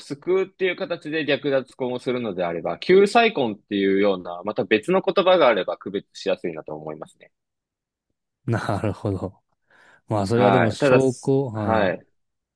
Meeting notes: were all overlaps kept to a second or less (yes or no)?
no